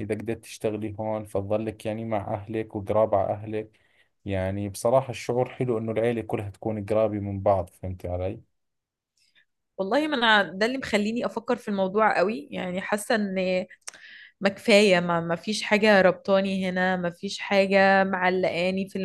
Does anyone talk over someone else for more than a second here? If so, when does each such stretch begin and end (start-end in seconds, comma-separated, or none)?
none